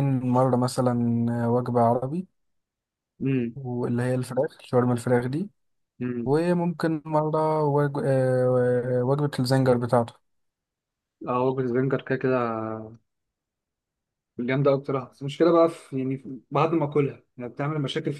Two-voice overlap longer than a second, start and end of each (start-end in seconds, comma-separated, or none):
none